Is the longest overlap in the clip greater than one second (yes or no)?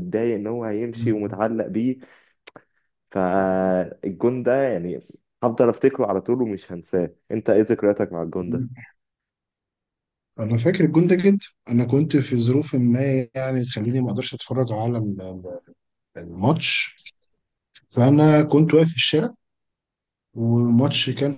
no